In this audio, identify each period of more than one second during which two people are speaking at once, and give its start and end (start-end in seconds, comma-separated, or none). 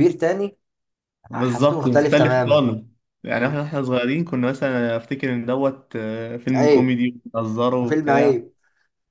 1.3-2.6